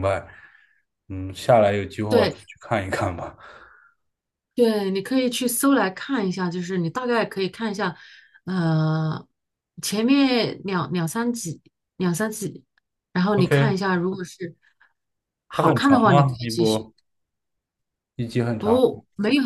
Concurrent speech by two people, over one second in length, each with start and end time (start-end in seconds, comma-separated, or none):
15.5-16.9